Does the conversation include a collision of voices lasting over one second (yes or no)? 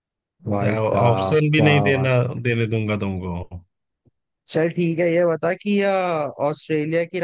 yes